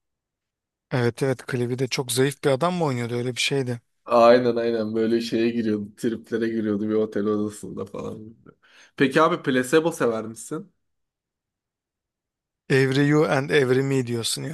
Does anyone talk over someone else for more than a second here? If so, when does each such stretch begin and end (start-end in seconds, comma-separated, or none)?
none